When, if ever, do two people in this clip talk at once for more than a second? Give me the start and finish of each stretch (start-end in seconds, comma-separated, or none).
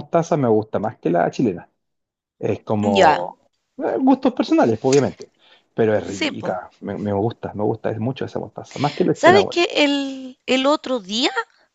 none